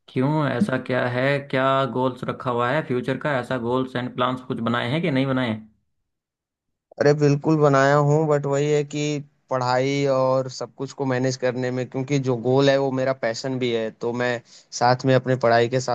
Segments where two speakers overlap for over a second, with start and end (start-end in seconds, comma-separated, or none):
none